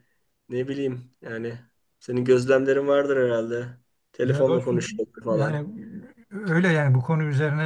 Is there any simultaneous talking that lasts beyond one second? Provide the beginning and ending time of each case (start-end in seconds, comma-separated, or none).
4.2-5.6